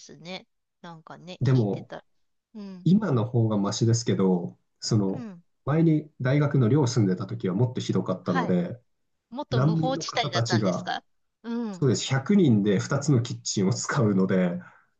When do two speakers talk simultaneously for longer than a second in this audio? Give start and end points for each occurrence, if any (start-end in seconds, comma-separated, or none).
9.5-10.9